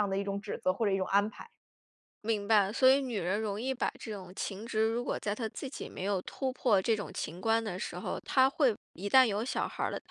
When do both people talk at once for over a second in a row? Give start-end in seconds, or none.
none